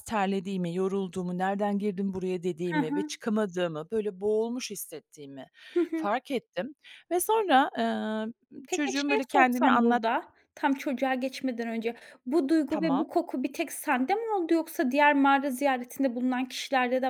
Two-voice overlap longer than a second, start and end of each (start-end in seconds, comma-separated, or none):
8.7-10.0